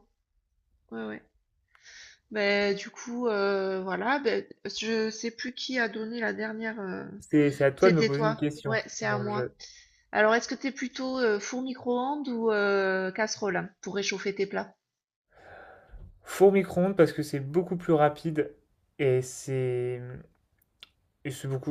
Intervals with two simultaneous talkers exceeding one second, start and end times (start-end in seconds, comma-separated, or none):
7.8-9.5